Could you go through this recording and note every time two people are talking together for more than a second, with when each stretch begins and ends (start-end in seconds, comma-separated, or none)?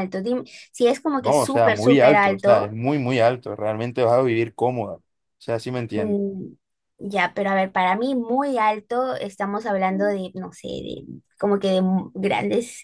1.2-2.7